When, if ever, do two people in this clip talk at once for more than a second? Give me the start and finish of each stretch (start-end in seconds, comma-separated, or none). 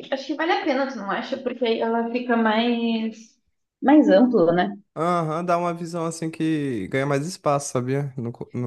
none